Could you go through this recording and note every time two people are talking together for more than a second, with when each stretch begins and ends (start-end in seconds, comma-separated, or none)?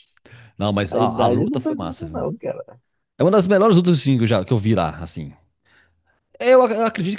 0.9-2.3